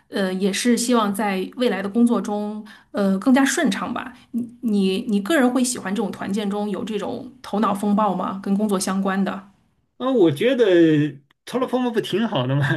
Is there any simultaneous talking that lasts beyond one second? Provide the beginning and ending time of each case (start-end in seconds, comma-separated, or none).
none